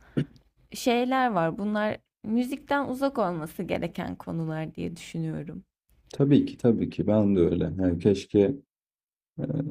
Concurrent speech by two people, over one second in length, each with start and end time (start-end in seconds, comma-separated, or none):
none